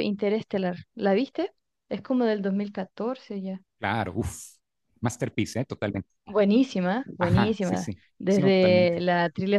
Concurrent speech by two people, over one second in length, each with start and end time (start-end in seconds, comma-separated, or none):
7.2-9.0